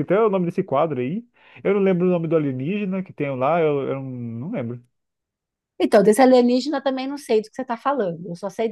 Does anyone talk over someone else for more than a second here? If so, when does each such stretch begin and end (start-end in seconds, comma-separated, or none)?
none